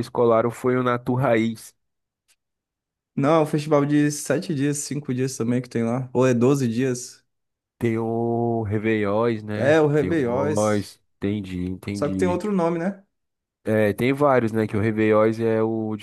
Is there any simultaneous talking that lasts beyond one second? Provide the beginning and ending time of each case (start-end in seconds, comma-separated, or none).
9.6-10.9